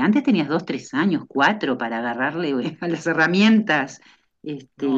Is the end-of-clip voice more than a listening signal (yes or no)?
yes